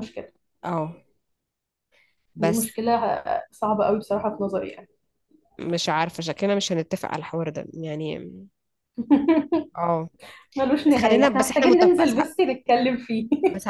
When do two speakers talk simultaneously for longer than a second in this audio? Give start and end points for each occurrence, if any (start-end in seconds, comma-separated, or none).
10.9-12.2